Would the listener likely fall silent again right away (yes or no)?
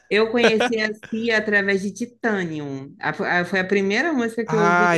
no